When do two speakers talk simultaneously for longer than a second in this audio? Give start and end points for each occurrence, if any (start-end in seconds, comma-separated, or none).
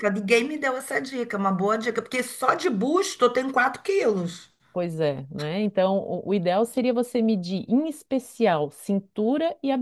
none